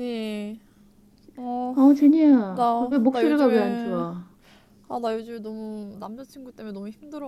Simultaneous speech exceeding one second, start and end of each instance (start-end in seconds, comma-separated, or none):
2.5-4.0